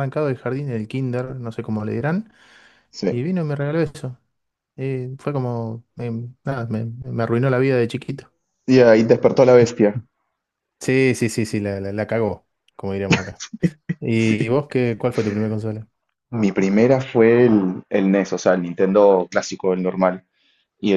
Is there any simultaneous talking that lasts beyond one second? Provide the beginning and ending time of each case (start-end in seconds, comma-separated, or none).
none